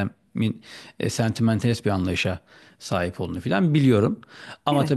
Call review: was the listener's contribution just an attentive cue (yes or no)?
yes